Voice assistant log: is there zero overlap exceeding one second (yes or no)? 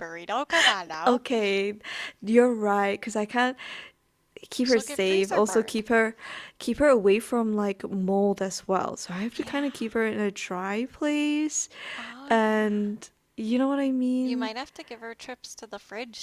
no